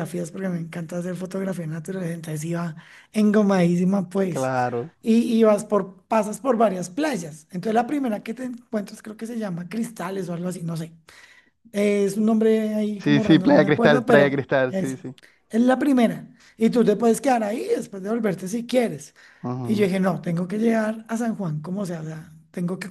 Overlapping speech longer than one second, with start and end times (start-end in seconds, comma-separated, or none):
13.0-15.0